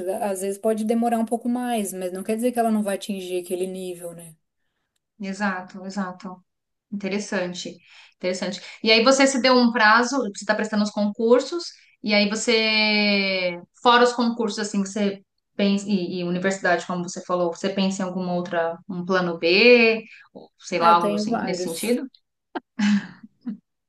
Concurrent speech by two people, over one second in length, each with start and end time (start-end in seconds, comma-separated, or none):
20.8-22.0